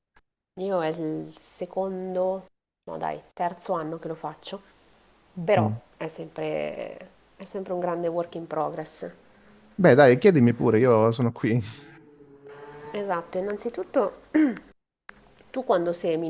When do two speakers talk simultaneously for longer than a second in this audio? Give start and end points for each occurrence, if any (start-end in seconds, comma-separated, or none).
none